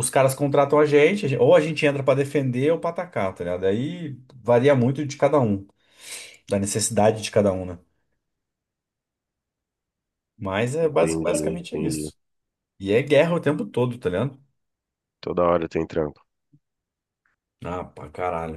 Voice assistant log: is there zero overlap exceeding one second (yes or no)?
no